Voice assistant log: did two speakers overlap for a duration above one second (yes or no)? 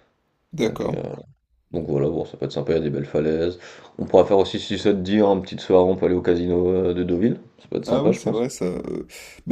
no